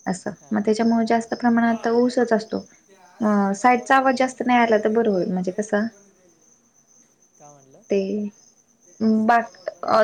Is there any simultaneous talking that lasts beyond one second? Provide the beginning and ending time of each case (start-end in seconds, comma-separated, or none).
3.2-5.0